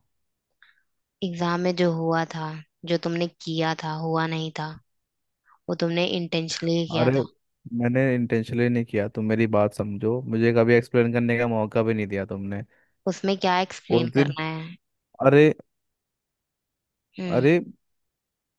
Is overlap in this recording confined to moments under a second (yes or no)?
yes